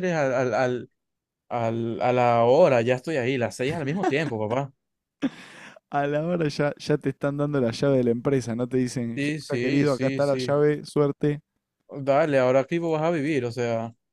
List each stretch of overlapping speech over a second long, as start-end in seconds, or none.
9.2-10.6